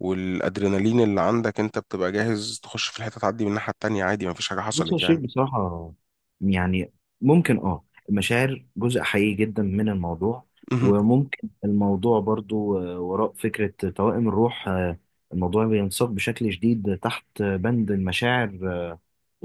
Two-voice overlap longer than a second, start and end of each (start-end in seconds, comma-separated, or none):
none